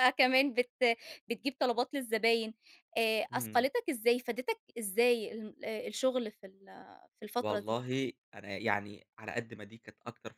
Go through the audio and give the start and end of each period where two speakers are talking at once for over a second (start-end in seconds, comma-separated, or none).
none